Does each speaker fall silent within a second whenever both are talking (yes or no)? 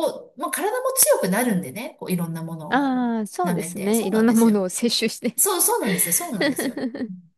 no